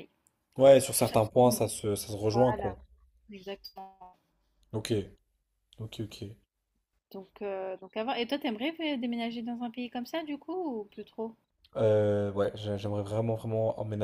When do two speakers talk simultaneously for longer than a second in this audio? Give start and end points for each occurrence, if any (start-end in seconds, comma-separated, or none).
none